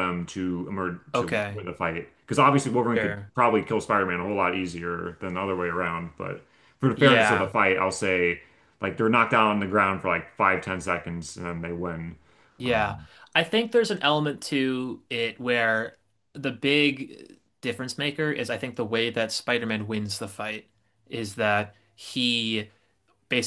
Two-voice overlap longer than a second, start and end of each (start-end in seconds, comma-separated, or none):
none